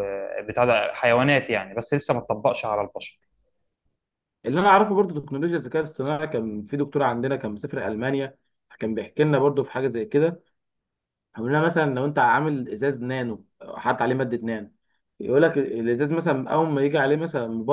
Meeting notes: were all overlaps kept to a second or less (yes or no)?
yes